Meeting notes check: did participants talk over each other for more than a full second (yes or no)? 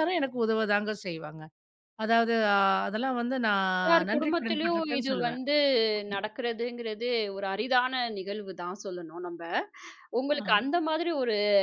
yes